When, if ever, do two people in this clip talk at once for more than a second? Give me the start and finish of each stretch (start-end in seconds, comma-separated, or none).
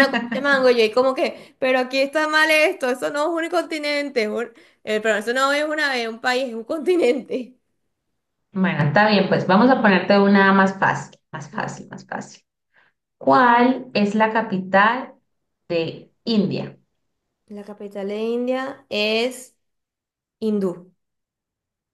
none